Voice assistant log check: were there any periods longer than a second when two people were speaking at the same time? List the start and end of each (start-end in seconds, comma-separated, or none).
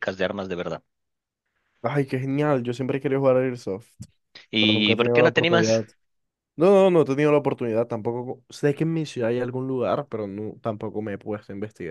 4.6-5.8